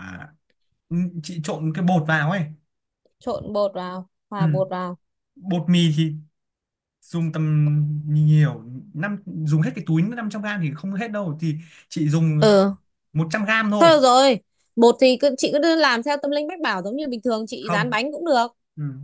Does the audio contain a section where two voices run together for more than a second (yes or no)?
no